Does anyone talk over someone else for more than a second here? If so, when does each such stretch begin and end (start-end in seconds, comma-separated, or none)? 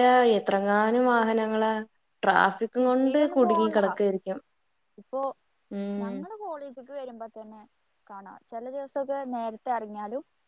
none